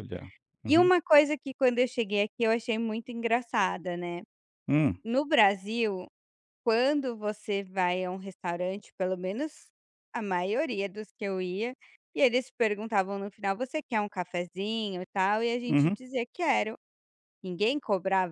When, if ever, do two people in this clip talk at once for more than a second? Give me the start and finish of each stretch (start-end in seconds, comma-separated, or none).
none